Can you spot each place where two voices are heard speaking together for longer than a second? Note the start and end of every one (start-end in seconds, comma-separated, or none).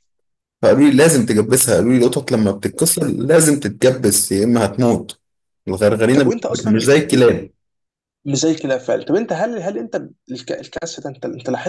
6.1-7.3